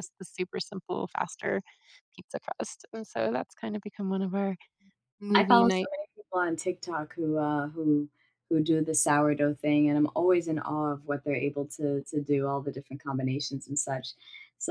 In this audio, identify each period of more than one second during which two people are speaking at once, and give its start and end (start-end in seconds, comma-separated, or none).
none